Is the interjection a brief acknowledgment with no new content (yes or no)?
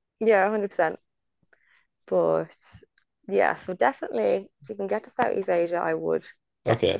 no